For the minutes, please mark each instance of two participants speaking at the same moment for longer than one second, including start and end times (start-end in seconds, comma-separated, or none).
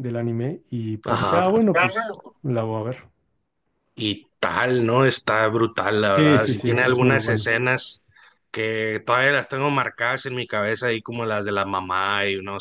6.1-7.5